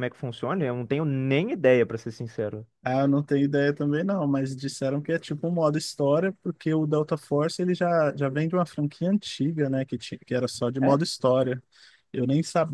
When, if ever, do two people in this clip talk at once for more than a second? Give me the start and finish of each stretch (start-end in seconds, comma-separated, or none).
none